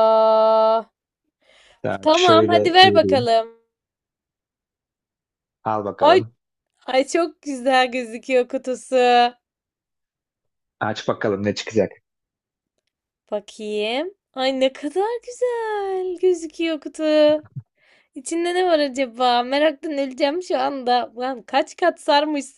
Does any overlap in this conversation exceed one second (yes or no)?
yes